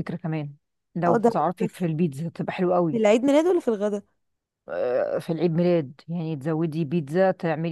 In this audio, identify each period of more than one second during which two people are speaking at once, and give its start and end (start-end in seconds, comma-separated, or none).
none